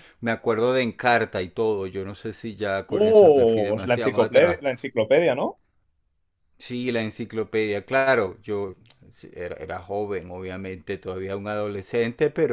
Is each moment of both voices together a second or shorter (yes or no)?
no